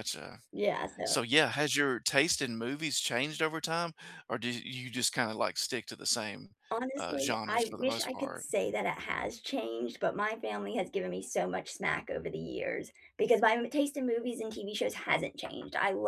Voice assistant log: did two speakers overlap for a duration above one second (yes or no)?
yes